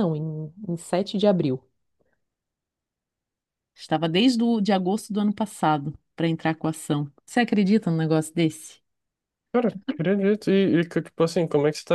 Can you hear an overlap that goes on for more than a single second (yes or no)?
no